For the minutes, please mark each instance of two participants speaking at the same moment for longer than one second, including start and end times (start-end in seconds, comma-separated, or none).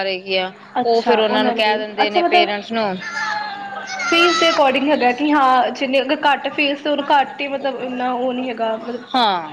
0.9-2.5